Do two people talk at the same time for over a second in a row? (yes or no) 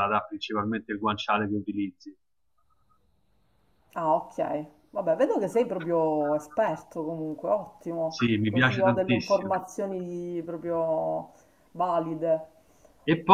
yes